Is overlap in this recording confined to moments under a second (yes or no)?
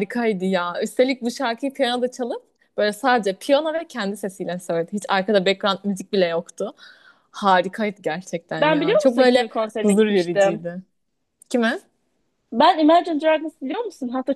no